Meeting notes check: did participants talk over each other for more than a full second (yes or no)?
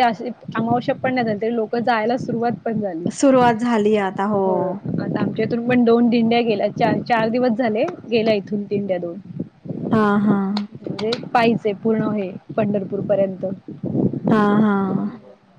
no